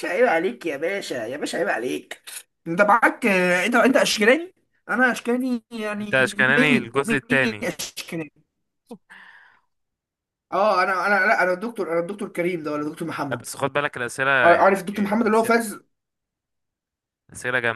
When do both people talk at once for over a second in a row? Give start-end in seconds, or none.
6.0-7.7, 14.4-15.7